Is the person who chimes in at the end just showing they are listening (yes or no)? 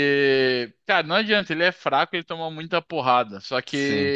yes